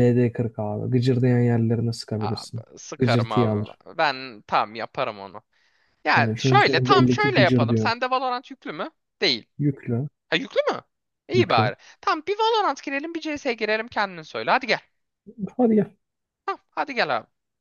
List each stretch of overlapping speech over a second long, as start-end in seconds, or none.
2.2-3.8, 6.1-7.9